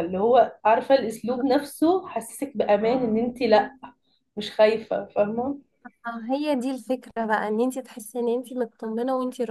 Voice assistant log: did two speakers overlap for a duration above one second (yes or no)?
no